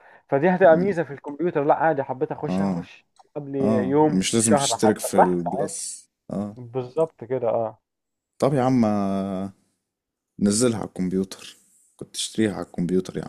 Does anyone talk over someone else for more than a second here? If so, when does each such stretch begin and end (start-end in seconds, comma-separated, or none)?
3.6-5.8